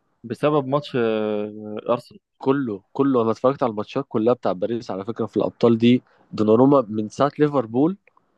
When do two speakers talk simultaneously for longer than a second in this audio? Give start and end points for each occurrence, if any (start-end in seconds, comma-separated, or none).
none